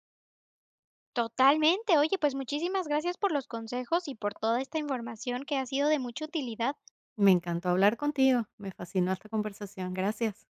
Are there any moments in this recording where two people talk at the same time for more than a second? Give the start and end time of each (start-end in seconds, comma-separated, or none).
none